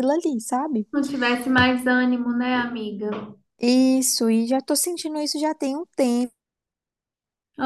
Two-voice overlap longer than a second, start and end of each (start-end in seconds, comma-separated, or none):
none